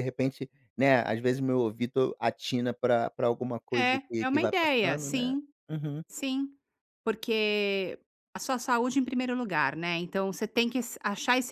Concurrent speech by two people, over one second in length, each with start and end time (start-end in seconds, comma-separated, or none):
3.8-5.4